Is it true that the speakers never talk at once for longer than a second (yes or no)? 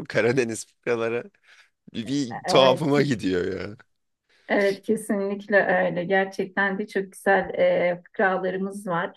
yes